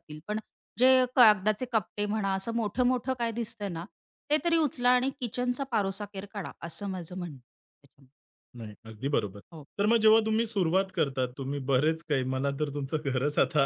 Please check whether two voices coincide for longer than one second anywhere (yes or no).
no